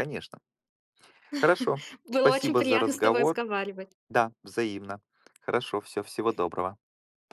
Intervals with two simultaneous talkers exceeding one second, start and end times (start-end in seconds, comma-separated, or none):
2.0-3.4